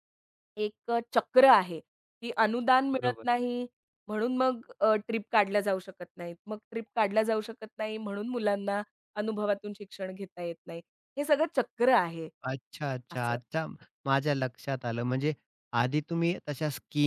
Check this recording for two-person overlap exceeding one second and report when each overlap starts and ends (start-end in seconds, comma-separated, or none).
none